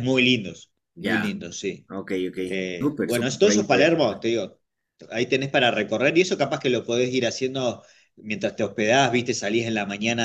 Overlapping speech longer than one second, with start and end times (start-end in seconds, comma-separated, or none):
2.8-4.2